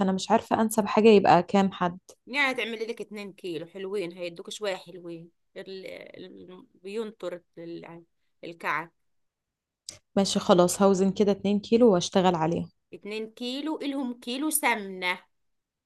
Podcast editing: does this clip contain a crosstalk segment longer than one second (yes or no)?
no